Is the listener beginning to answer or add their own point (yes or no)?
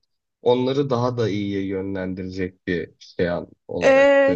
yes